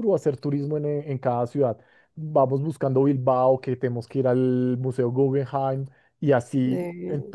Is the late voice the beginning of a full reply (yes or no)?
no